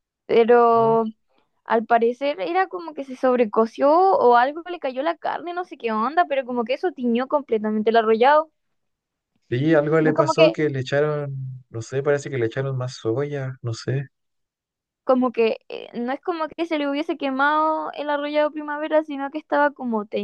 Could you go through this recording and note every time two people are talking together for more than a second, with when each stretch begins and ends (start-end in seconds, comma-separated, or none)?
none